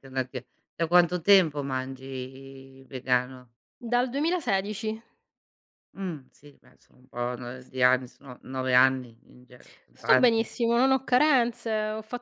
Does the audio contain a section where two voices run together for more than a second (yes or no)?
no